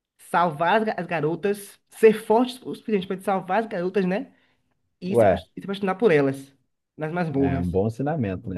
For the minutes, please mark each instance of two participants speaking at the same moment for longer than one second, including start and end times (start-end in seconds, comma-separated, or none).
none